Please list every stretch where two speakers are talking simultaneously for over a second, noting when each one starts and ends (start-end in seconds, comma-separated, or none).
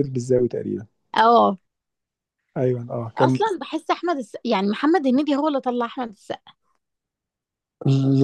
none